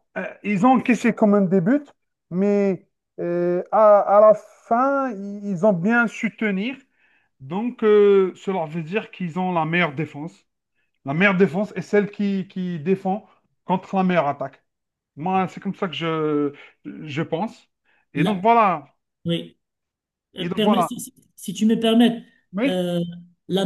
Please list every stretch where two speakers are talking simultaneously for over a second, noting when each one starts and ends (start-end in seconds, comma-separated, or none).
none